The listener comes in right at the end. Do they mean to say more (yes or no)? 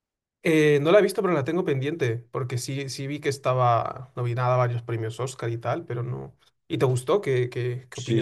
yes